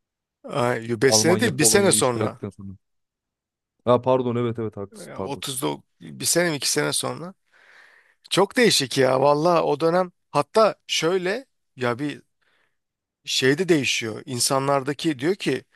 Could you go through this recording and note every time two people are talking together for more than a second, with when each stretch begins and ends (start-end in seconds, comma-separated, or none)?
1.1-2.4